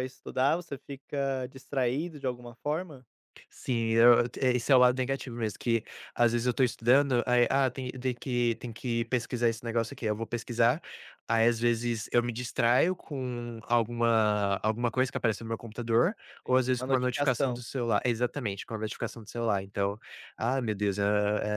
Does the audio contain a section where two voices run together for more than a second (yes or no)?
yes